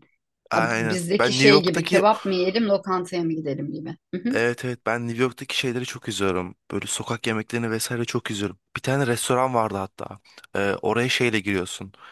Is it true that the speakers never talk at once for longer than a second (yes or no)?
no